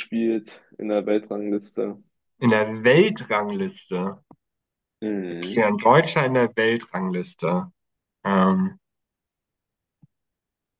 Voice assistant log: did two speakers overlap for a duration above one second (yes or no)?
no